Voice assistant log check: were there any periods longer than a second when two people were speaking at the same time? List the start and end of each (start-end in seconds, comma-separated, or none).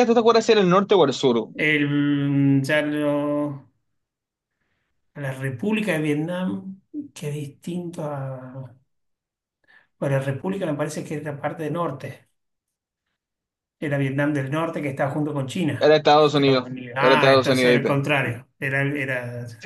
15.8-18.0